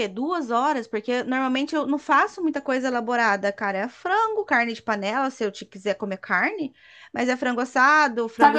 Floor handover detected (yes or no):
yes